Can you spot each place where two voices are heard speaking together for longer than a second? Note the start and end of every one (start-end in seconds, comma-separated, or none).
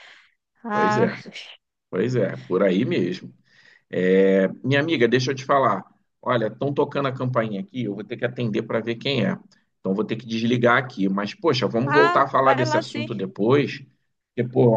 11.8-13.1